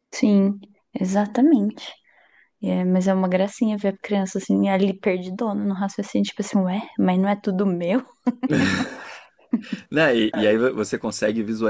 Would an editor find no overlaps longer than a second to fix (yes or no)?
yes